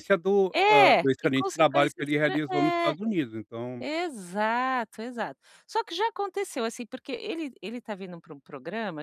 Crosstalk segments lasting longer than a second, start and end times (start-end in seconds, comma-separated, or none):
0.5-3.0